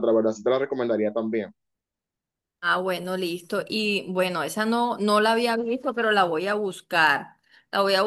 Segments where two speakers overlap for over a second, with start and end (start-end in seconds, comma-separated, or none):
none